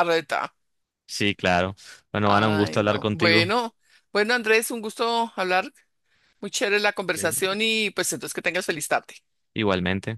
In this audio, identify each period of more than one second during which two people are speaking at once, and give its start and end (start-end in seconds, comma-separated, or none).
2.2-3.5